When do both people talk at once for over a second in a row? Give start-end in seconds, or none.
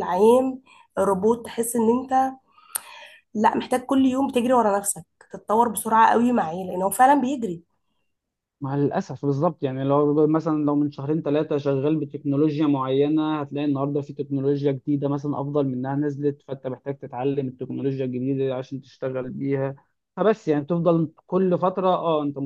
none